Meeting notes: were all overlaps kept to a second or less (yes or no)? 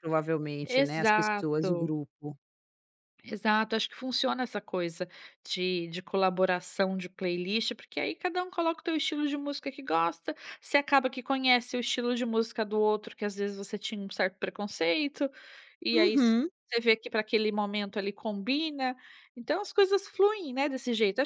no